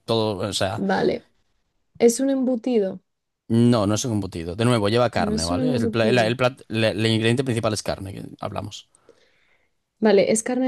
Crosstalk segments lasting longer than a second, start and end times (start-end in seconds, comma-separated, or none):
5.2-6.3